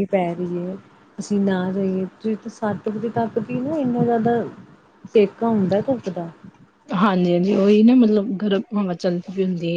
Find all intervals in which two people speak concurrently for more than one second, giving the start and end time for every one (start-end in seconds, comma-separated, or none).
none